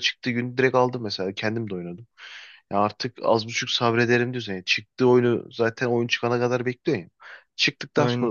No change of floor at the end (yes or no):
yes